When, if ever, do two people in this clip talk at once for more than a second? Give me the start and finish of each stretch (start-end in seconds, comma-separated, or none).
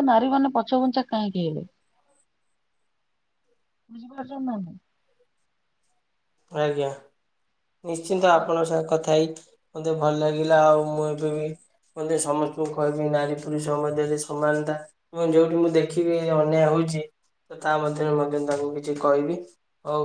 none